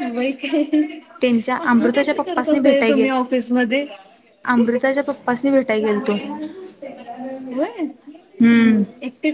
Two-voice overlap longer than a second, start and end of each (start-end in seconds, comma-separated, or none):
1.8-3.1